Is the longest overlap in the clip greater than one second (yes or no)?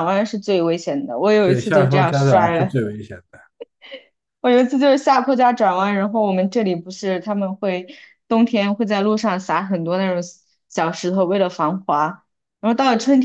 yes